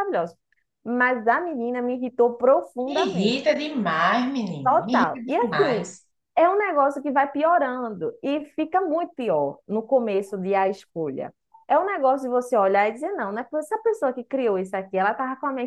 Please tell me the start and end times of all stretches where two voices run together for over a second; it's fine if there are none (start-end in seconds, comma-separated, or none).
4.6-5.9